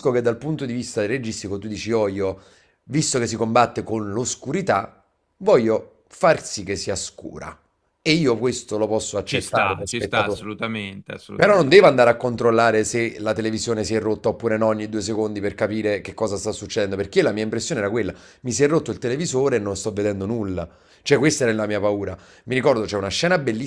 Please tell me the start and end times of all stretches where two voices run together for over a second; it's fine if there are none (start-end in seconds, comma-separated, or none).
9.2-10.4